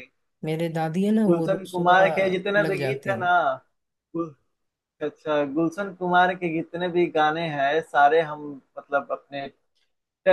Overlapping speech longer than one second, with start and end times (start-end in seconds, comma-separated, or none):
1.3-3.3